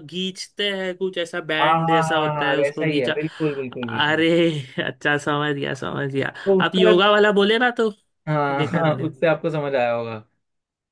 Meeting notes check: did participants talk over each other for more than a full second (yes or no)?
yes